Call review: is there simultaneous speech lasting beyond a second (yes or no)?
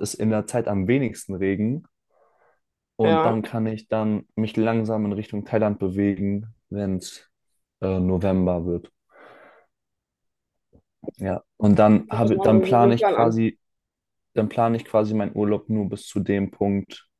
yes